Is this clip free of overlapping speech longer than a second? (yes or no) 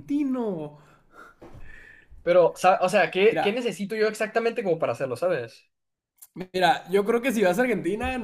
yes